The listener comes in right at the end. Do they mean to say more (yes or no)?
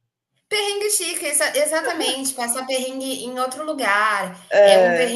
no